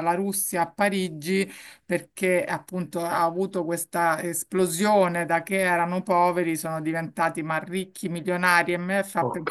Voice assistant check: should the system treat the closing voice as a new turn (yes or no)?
no